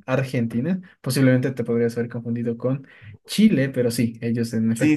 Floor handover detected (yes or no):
yes